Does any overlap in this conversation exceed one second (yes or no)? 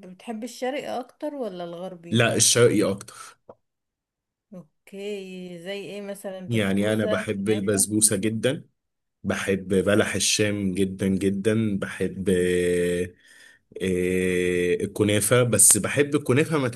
yes